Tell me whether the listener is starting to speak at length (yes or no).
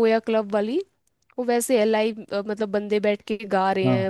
no